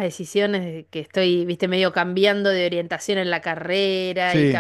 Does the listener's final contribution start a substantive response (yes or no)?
no